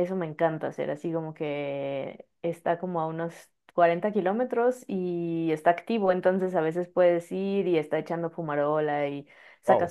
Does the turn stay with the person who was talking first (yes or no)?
yes